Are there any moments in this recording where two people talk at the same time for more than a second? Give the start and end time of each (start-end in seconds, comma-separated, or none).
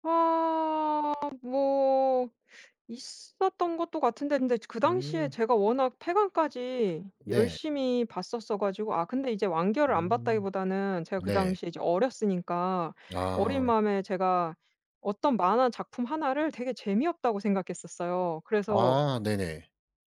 none